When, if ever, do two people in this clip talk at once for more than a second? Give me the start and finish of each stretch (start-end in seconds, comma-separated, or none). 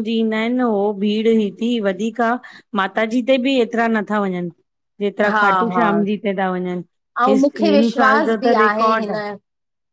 7.3-9.1